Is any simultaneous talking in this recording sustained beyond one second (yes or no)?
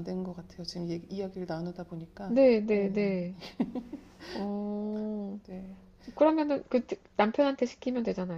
no